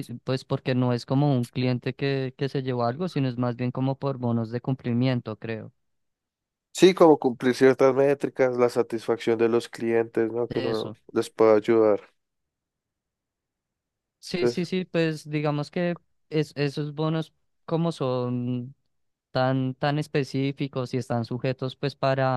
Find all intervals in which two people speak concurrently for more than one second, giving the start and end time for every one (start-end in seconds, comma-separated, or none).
none